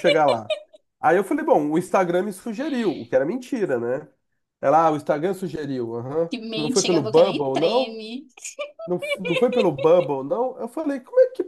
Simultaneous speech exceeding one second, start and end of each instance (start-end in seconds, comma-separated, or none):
6.3-8.0